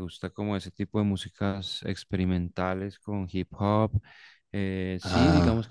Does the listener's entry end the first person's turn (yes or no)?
no